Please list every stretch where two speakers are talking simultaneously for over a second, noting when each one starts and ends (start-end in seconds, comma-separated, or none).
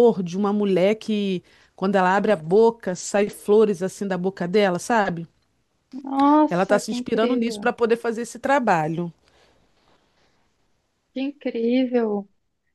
6.5-7.7